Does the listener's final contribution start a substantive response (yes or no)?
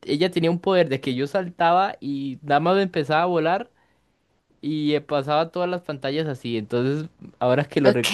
no